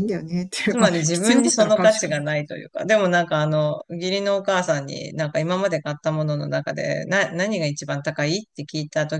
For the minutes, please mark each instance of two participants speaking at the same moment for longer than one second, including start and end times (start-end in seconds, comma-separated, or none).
0.7-2.2